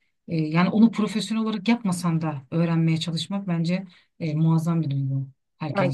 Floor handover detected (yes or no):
yes